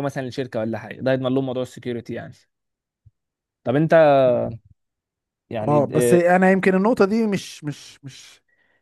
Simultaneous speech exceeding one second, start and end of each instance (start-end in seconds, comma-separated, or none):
none